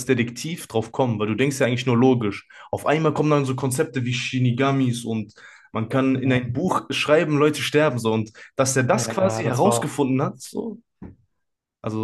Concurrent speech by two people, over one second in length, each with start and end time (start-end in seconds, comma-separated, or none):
8.9-10.5